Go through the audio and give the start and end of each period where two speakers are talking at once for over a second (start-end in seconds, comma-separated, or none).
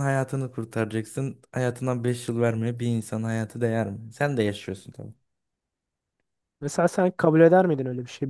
none